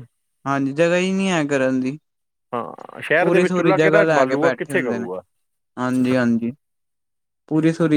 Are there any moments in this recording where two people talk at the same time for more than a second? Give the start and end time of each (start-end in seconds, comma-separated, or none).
3.2-5.1